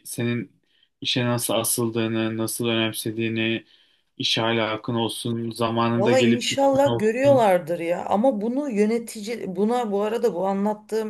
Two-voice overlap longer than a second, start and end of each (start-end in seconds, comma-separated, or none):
5.9-7.5